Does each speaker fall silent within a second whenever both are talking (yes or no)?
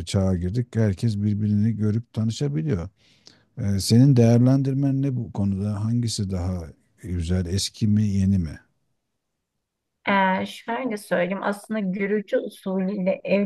yes